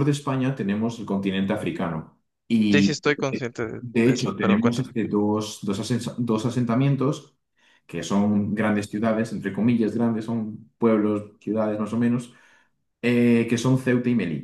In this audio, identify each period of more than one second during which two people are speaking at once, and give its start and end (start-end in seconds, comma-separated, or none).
2.7-4.9